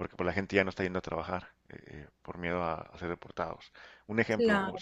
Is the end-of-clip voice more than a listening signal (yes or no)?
no